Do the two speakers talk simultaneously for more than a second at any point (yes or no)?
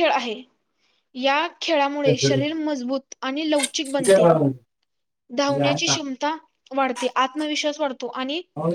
no